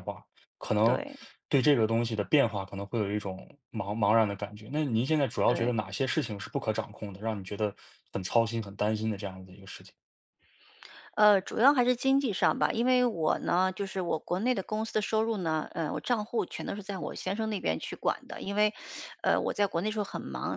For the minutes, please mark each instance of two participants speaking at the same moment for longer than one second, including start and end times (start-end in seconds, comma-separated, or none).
none